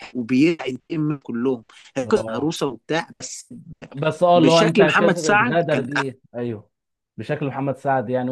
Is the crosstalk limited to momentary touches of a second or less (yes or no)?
no